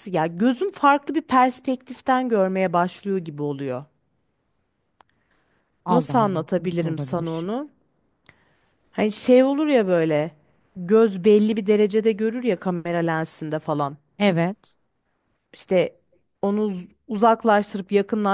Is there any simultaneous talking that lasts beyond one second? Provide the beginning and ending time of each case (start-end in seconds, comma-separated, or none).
5.9-7.5